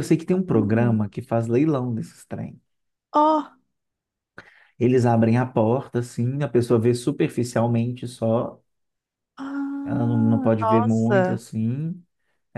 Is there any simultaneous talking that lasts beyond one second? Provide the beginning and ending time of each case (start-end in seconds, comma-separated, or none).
9.8-11.4